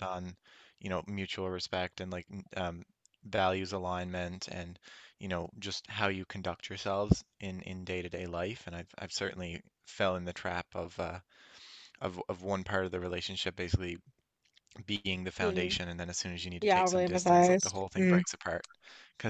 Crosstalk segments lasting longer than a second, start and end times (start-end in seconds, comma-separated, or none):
16.6-18.2